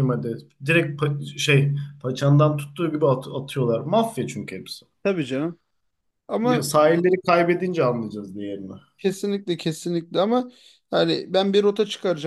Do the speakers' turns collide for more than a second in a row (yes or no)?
no